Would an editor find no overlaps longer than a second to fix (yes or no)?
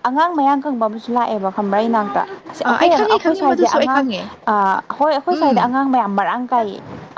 no